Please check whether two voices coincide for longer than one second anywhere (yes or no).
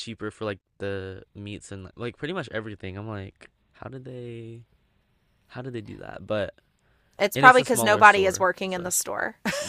yes